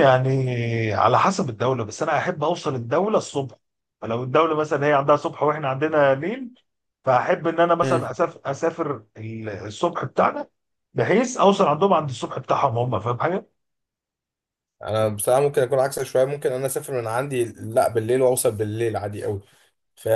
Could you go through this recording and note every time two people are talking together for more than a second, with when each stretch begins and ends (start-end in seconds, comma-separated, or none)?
none